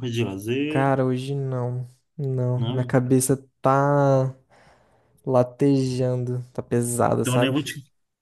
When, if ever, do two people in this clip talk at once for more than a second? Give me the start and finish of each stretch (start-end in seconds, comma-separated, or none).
none